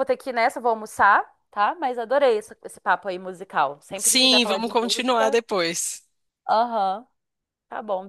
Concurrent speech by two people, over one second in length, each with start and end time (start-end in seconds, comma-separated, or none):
4.0-5.4